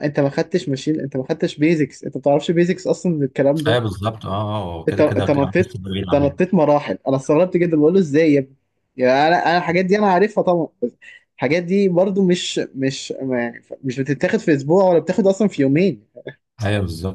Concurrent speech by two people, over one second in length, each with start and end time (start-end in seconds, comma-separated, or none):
4.9-6.4